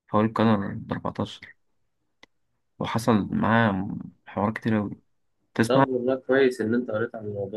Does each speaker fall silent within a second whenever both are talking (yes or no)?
yes